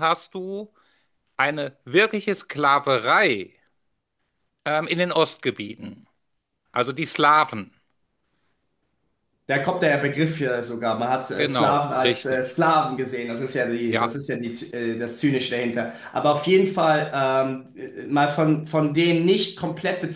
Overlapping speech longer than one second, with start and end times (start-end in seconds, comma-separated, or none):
11.4-12.6